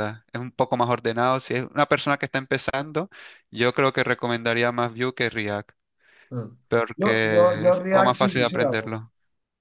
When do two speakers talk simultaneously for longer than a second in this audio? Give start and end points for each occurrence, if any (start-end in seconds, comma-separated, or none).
7.0-9.0